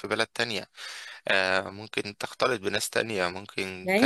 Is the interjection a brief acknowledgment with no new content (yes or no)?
no